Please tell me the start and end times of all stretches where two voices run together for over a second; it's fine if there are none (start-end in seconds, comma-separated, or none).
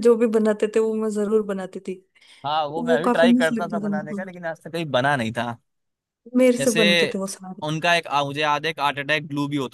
2.8-4.2